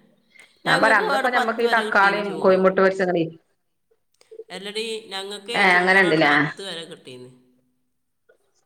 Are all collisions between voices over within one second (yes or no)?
no